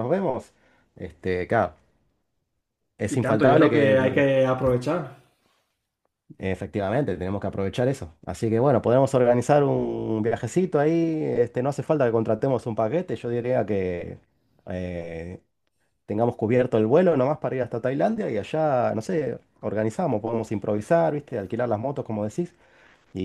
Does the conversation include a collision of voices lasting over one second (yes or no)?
yes